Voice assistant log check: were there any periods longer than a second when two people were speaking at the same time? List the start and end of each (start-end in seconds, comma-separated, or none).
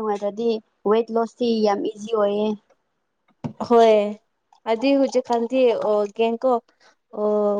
none